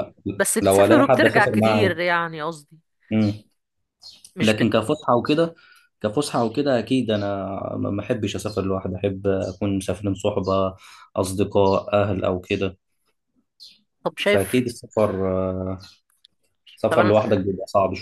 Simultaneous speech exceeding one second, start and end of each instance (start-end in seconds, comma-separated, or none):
0.6-2.0